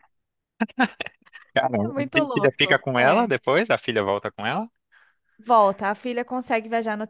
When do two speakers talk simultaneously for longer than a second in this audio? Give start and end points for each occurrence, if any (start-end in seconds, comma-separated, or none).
1.8-3.3